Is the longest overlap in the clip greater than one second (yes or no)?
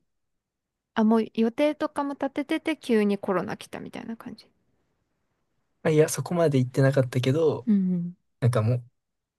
no